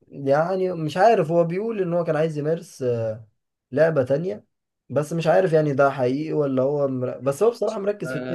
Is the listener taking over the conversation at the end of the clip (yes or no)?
yes